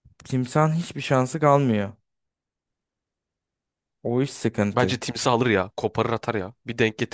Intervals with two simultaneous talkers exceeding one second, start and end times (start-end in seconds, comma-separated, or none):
none